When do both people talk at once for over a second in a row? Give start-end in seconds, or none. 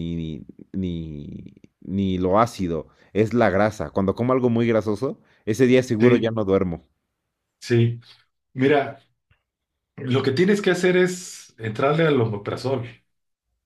none